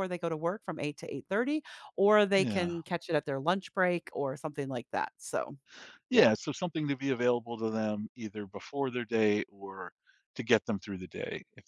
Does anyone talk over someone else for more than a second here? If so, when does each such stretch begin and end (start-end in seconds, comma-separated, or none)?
none